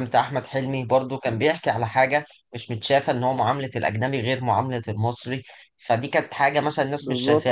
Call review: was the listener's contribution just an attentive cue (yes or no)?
yes